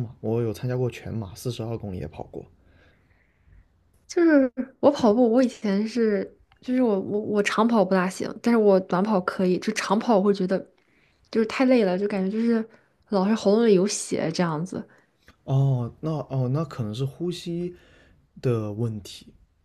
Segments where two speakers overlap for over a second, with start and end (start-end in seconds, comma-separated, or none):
none